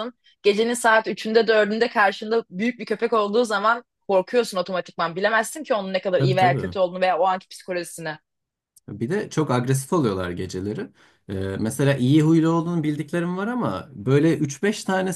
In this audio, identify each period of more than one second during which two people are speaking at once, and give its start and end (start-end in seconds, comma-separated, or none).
none